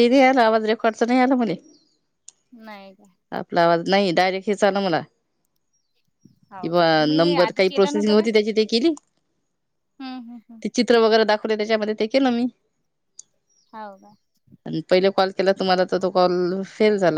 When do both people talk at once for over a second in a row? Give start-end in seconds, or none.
6.6-8.3